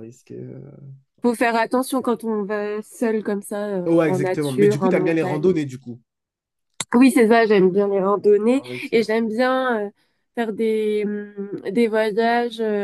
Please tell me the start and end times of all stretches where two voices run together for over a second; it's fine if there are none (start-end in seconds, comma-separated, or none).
3.9-5.6